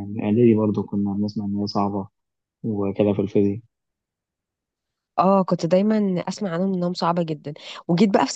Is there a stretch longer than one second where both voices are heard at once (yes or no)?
no